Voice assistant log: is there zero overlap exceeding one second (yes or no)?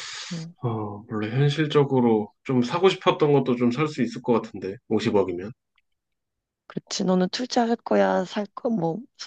yes